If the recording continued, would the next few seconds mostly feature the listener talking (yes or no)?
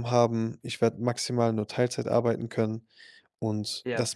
no